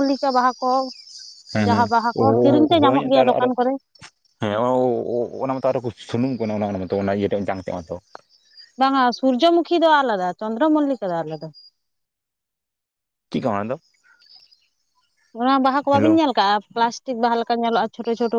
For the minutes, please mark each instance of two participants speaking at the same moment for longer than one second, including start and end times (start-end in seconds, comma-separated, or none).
1.6-3.4